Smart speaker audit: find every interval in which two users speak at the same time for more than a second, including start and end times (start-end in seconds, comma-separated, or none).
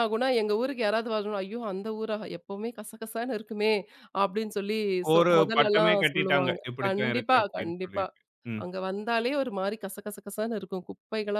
5.1-8.0